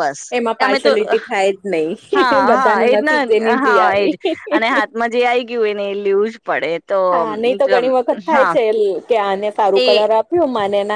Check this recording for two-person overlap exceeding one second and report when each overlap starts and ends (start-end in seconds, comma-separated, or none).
2.1-4.1